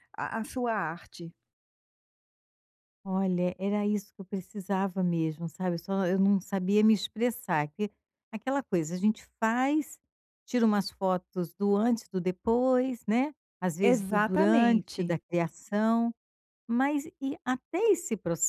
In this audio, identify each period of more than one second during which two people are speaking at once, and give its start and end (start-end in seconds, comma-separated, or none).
13.8-15.2